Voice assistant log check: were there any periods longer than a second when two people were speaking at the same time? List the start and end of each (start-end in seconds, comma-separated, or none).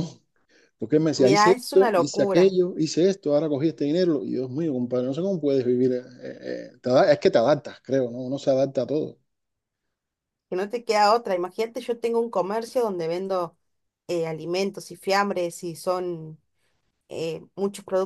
1.2-2.5